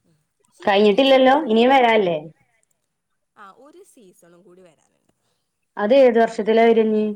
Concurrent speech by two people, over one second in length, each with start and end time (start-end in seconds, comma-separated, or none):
0.7-2.2